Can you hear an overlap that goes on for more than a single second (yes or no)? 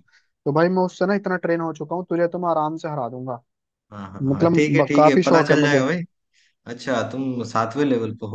yes